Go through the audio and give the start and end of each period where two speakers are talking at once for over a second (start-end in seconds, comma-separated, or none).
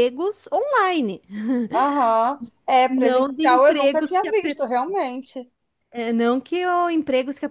2.9-4.8